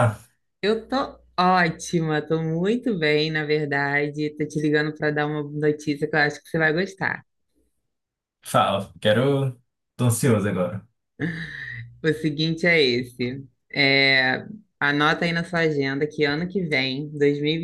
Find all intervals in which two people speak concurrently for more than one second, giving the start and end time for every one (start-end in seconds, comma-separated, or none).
none